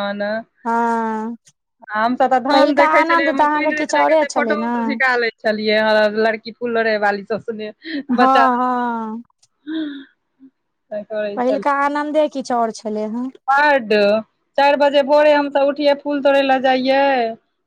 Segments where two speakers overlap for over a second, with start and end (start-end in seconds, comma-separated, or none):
2.5-4.7